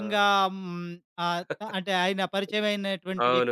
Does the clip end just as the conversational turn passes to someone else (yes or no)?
yes